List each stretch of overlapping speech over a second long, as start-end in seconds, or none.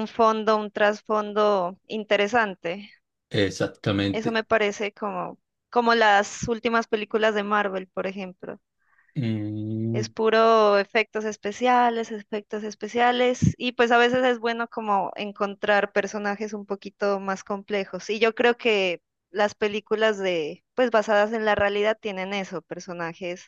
none